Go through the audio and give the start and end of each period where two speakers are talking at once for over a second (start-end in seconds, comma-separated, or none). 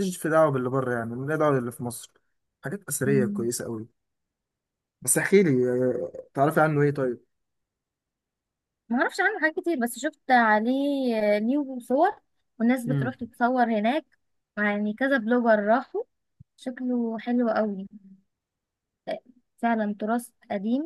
none